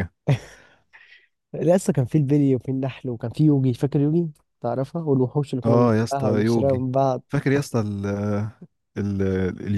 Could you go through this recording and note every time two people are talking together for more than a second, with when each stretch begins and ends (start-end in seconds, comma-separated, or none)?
5.6-6.9